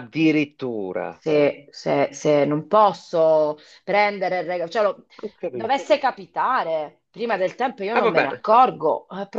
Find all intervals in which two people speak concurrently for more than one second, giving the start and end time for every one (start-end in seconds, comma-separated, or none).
none